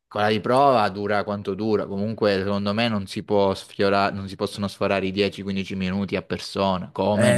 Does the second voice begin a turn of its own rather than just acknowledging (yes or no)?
yes